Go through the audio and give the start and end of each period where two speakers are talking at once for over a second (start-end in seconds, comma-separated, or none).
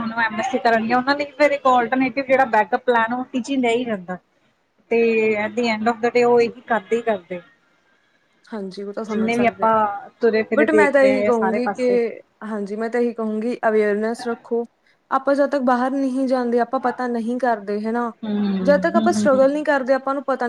10.5-11.9